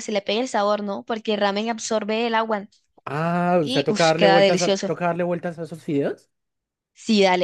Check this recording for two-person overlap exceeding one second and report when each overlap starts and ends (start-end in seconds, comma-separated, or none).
3.6-4.9